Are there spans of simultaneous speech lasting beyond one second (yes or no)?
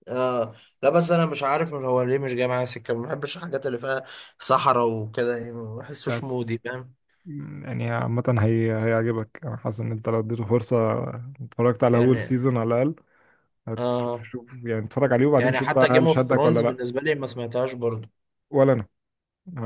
yes